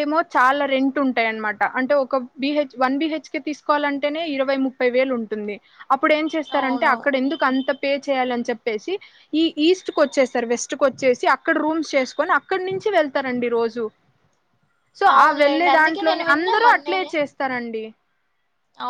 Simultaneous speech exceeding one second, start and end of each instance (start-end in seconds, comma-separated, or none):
15.2-17.1